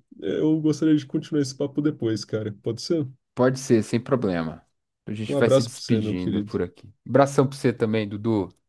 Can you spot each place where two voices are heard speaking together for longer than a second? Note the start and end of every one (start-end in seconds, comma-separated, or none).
5.3-6.6